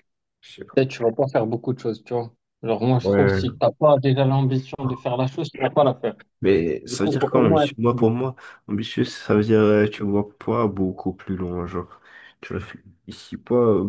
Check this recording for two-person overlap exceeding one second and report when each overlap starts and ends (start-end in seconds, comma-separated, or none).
6.9-8.3